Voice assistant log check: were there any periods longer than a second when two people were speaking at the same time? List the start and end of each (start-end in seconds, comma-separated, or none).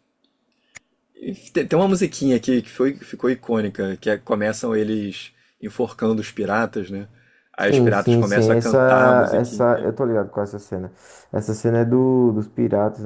7.6-9.9